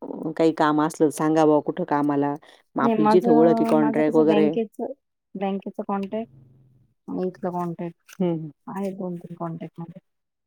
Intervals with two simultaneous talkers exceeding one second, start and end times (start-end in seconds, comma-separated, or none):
2.9-4.5